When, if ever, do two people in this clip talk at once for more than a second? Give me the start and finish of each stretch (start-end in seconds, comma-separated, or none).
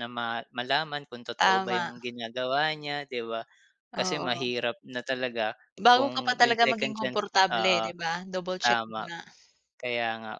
5.9-7.9